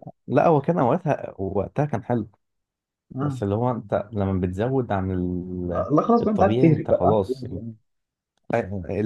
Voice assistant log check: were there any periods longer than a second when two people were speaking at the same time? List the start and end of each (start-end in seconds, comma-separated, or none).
5.8-7.5